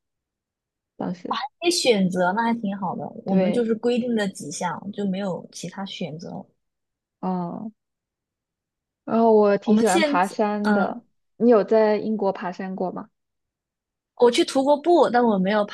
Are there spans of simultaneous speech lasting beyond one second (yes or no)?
yes